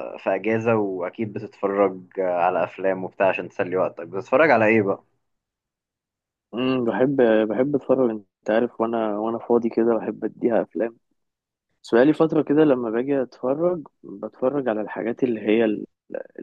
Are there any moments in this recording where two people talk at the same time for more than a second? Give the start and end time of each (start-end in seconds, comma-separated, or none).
none